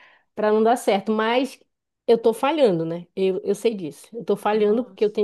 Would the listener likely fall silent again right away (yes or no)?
yes